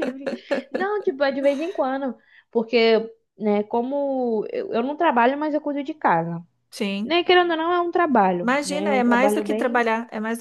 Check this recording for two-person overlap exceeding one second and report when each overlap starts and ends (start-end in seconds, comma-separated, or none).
8.4-9.8